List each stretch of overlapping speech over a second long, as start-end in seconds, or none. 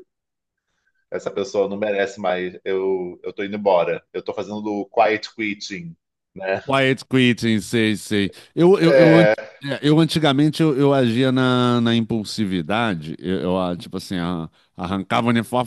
none